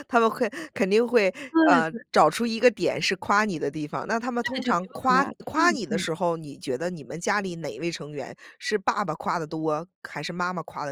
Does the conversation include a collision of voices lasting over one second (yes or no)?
yes